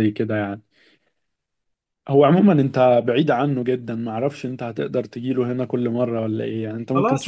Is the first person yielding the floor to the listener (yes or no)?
yes